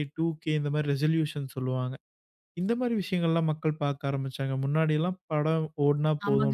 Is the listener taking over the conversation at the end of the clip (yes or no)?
yes